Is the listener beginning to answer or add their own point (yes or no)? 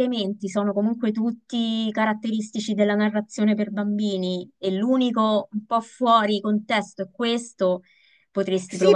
yes